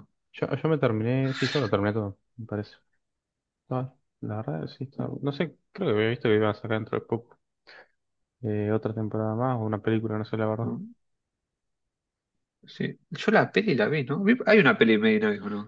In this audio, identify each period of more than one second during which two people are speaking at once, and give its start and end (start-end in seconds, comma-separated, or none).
none